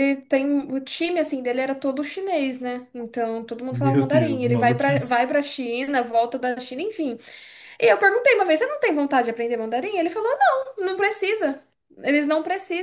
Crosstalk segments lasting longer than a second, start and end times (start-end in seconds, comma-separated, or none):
3.7-5.3